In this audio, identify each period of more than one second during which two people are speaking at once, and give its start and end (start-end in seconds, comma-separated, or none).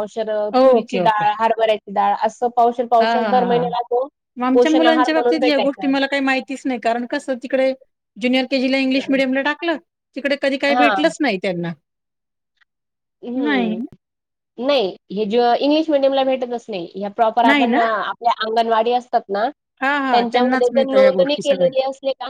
4.5-5.9, 20.1-21.7